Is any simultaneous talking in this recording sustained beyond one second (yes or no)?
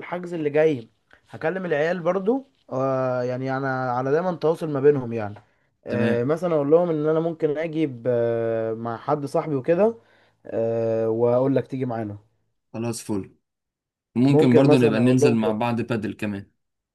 yes